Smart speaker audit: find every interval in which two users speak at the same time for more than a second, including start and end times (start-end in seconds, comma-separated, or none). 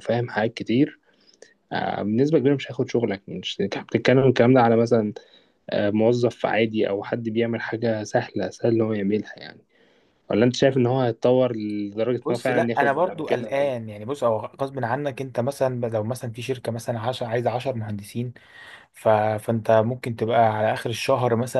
12.2-13.7